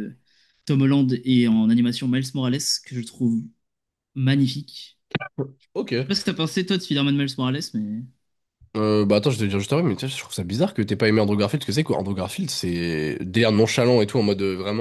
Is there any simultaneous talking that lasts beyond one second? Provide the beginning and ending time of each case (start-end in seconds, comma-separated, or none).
none